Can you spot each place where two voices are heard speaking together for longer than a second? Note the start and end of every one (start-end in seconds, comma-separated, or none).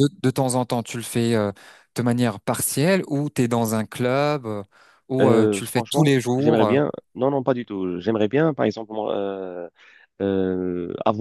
5.2-6.8